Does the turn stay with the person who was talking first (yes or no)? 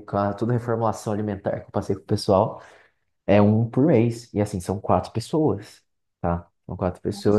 no